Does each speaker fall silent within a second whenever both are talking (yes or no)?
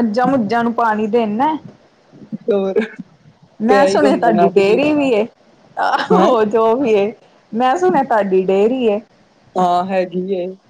no